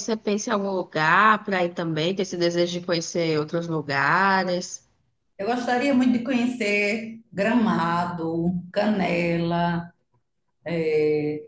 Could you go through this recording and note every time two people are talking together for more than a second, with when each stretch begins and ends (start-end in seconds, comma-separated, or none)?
none